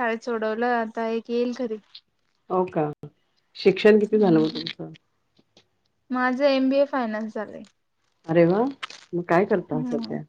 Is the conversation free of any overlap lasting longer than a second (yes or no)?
yes